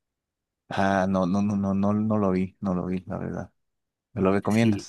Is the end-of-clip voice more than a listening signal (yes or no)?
yes